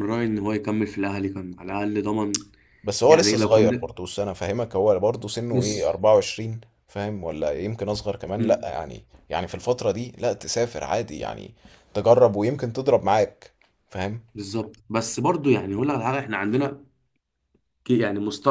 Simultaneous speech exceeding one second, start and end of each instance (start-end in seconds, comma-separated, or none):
none